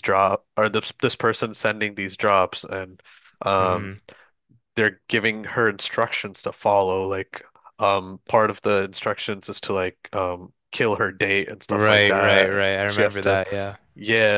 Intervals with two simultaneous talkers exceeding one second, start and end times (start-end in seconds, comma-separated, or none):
11.7-13.4